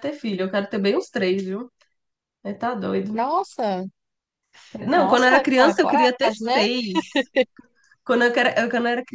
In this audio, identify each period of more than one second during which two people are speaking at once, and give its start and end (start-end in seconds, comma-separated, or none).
4.9-6.6